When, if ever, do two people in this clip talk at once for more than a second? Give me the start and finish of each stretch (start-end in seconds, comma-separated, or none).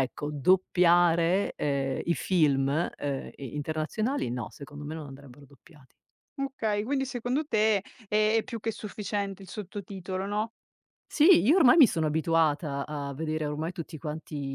none